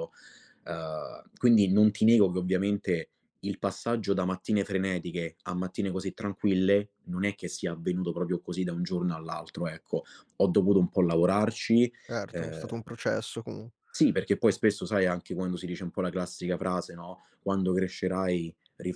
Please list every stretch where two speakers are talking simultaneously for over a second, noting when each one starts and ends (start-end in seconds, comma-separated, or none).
none